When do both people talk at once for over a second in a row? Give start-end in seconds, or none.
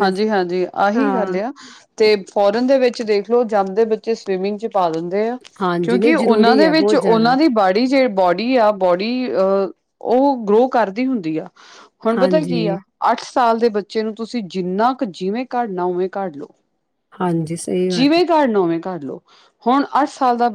5.8-7.4